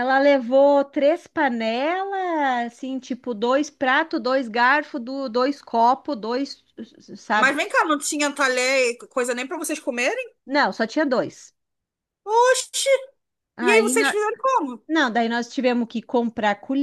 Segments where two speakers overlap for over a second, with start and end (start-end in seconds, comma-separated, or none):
none